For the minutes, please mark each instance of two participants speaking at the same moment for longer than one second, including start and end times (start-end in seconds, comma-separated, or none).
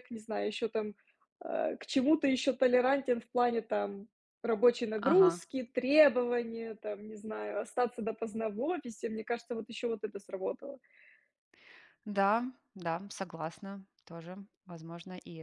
none